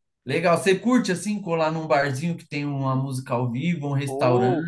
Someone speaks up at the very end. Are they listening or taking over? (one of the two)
taking over